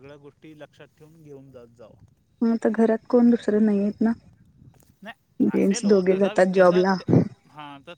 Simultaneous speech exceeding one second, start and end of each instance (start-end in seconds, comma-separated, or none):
5.4-6.8